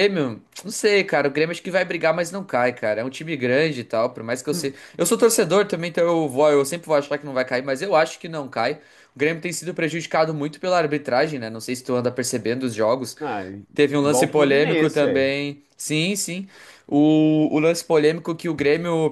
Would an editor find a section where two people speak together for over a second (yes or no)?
yes